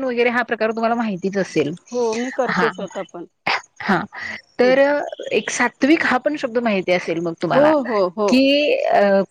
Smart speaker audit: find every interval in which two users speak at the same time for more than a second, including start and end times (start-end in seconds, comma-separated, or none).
none